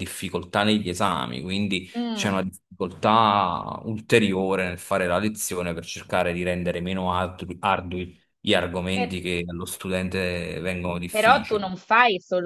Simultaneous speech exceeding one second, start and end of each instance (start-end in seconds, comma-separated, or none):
none